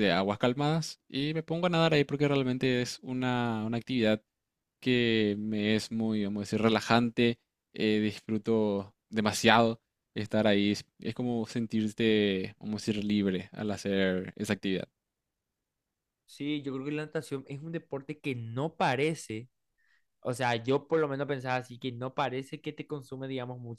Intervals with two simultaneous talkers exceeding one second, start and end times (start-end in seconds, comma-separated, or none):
none